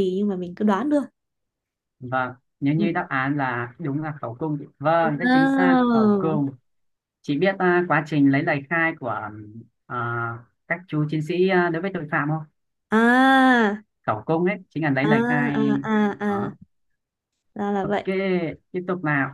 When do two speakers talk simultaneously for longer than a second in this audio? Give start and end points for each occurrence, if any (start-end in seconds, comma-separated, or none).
5.0-6.5